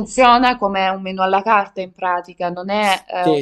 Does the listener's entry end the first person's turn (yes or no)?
yes